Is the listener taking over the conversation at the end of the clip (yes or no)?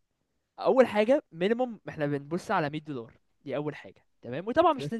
no